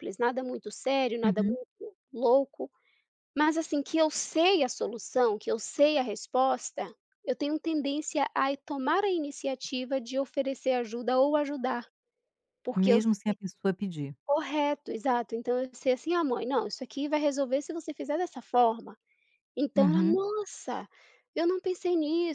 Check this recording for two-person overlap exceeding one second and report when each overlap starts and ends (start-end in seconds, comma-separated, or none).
none